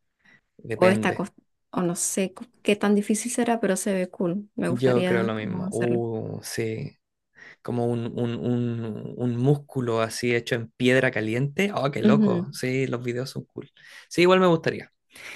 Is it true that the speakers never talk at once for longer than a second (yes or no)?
no